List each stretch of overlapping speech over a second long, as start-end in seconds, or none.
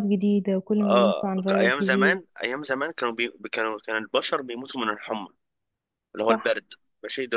0.8-2.2